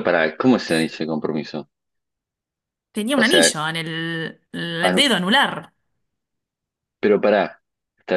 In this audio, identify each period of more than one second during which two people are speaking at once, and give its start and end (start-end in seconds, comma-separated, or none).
none